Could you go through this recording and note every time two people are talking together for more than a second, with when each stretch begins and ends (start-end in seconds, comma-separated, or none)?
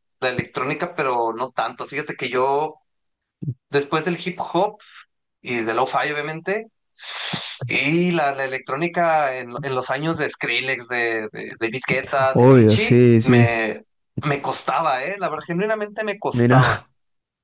12.3-13.7